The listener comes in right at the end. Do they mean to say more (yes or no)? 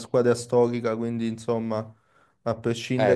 no